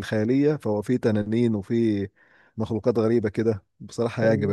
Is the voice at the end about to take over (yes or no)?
yes